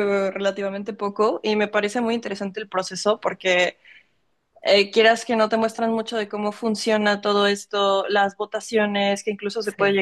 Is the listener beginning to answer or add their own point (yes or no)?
no